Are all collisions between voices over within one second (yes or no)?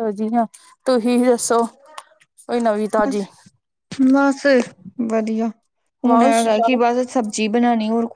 yes